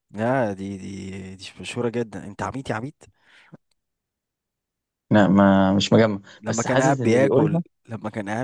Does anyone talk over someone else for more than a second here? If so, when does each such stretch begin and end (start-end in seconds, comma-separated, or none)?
6.4-7.6